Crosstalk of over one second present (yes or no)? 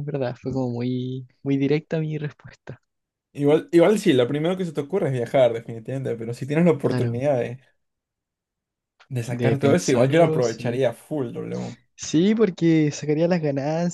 yes